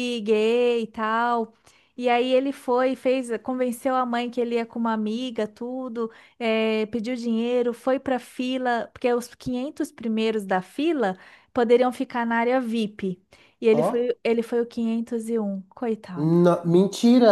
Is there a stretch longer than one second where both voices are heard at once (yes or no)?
no